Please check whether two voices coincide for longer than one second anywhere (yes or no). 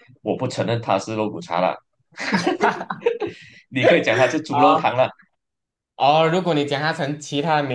no